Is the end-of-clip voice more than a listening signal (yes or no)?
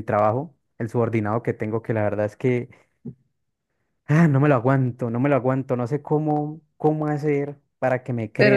no